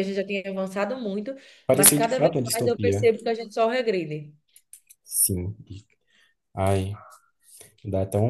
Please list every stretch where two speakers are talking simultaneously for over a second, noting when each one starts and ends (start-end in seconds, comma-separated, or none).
1.7-3.1